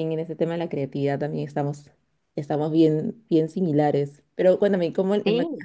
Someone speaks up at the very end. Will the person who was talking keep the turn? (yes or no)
yes